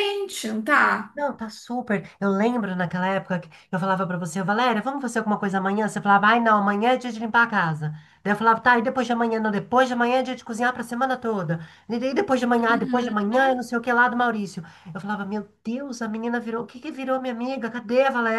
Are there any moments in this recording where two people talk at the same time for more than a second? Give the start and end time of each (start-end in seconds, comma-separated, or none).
none